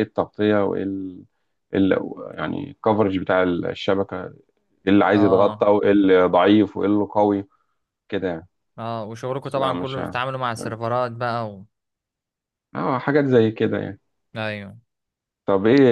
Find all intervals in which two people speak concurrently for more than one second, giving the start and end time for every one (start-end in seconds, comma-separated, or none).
9.4-10.7